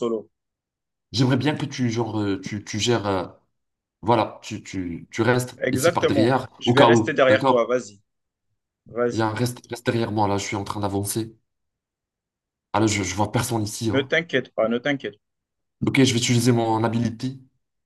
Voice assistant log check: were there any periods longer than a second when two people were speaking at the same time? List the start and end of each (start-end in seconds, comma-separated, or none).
5.6-7.7